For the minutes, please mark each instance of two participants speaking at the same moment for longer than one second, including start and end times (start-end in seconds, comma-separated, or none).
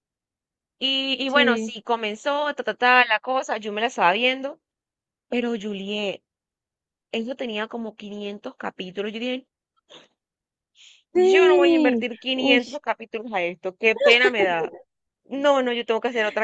11.1-12.8